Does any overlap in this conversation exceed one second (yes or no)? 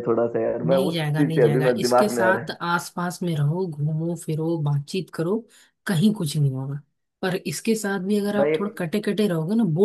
yes